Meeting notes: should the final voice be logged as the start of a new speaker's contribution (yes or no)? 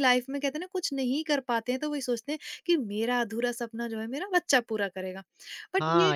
yes